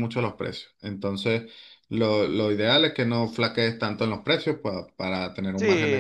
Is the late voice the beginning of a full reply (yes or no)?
yes